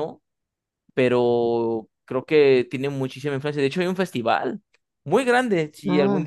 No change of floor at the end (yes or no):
yes